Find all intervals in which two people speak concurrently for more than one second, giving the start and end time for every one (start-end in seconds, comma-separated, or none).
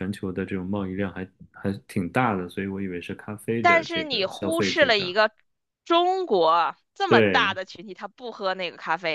3.6-5.2